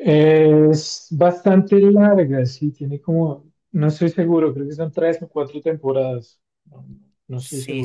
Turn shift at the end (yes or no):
yes